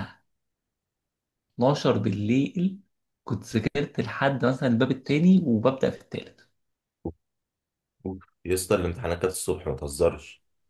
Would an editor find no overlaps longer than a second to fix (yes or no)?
yes